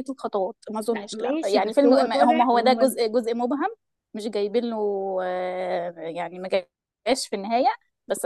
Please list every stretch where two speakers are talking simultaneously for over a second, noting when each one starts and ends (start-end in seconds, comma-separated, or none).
0.9-3.0